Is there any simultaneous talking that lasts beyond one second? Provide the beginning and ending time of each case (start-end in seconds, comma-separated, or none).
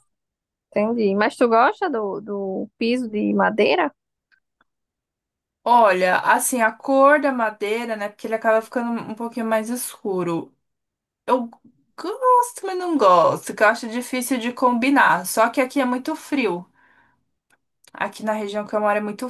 none